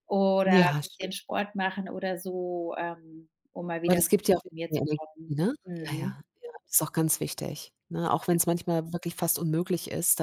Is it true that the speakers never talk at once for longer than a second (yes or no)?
no